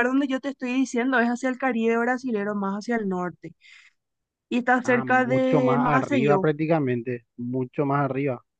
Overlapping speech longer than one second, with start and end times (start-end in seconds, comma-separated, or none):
4.8-6.5